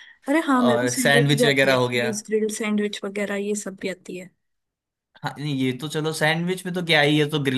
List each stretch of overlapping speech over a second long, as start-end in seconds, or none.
0.6-2.1